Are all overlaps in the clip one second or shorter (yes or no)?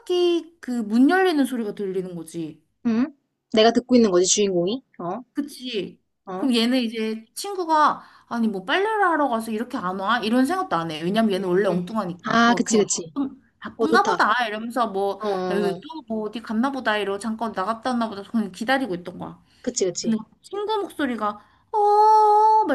no